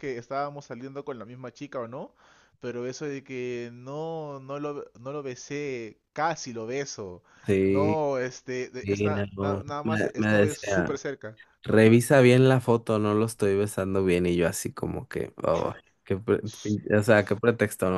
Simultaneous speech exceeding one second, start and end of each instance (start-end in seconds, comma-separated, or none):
8.8-11.0